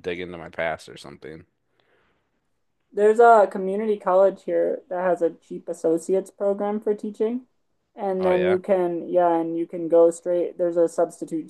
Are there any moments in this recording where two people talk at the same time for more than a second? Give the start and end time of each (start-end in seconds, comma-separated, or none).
none